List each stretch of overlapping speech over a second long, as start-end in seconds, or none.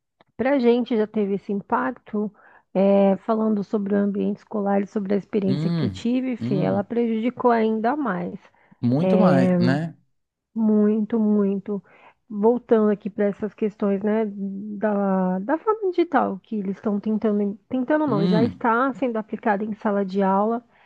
5.5-6.9